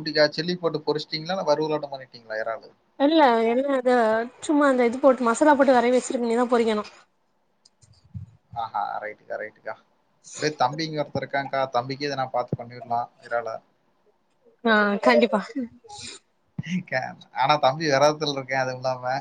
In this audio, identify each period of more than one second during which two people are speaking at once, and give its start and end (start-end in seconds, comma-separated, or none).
none